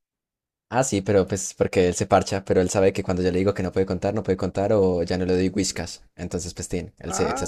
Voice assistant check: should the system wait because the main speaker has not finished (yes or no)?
no